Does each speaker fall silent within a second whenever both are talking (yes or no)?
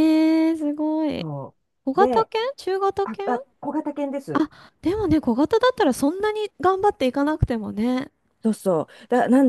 yes